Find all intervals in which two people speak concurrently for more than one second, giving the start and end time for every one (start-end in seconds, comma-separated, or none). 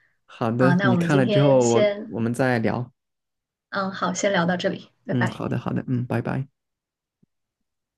0.6-2.2